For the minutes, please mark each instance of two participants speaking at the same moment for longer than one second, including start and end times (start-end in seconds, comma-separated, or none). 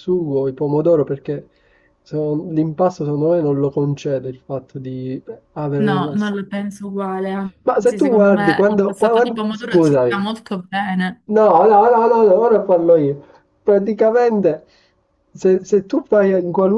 7.7-10.2